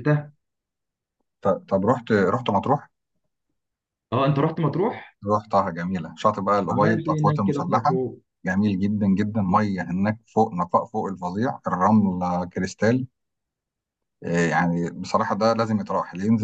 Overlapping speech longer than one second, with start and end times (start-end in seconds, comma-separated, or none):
6.7-8.0